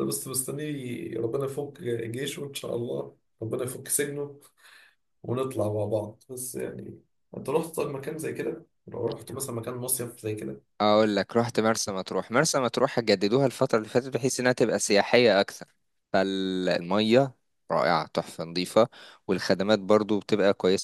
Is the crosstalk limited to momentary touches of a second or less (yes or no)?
yes